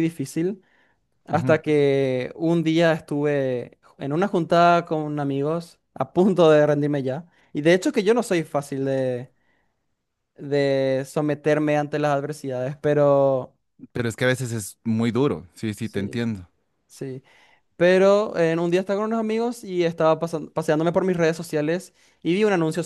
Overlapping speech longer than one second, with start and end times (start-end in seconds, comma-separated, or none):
none